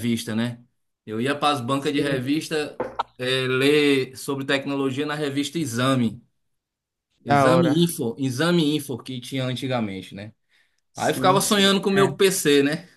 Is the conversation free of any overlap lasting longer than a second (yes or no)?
no